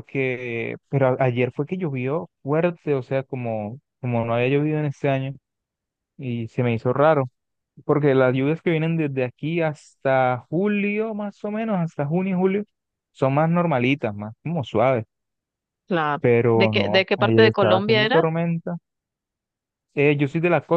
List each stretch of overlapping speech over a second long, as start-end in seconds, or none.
16.2-18.2